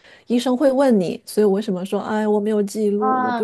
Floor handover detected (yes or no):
yes